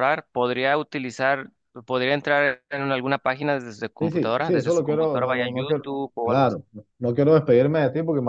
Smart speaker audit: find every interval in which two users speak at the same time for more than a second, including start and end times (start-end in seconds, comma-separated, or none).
4.0-6.6